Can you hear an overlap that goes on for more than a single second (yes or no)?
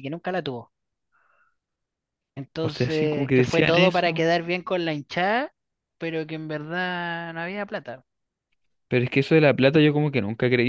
yes